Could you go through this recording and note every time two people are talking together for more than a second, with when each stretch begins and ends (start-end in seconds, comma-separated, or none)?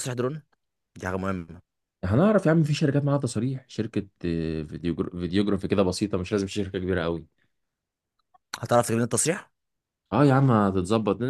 none